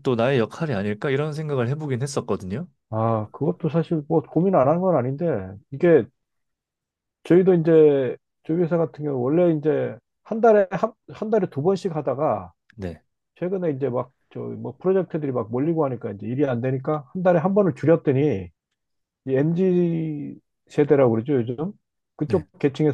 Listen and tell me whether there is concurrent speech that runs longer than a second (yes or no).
no